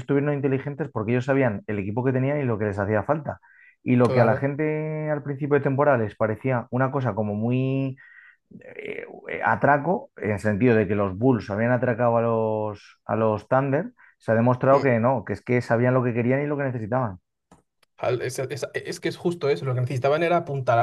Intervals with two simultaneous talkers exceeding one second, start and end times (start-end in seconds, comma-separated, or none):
none